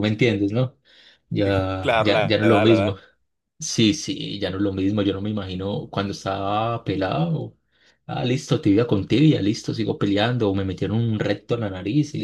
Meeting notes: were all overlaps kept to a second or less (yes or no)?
no